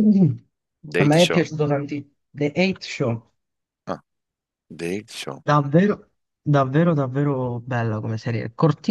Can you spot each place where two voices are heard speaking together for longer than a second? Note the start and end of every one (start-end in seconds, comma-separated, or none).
none